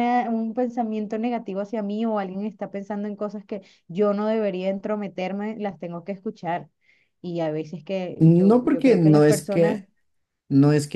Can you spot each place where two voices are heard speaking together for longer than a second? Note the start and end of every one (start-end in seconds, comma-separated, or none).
8.2-9.8